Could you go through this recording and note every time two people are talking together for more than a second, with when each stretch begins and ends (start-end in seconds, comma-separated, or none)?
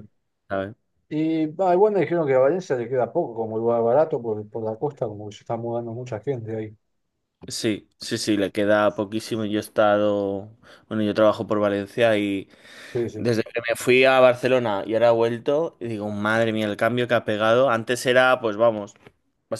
none